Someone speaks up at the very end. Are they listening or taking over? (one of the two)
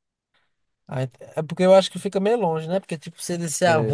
listening